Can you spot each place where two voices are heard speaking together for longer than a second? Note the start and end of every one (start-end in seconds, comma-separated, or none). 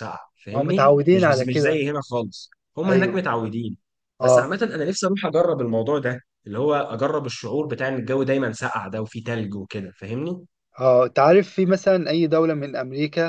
0.5-1.8